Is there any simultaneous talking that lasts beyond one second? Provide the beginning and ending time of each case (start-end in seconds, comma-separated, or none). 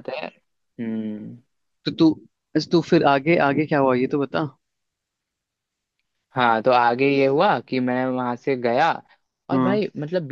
none